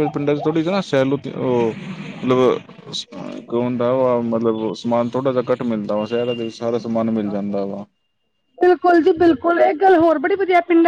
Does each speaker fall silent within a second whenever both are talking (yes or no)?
yes